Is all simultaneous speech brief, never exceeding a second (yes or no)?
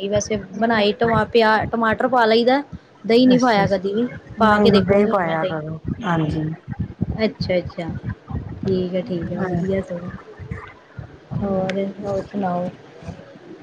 no